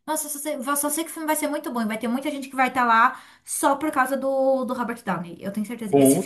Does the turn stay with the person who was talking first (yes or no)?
yes